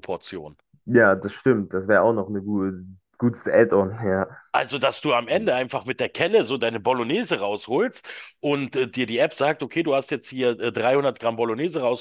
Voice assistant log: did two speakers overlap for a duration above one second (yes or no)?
no